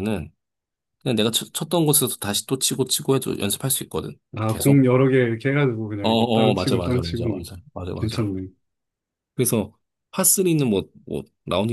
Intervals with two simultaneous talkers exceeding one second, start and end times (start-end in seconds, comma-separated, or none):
6.0-7.2